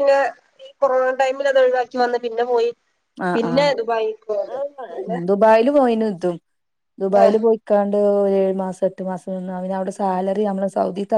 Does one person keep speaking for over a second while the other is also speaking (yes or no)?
no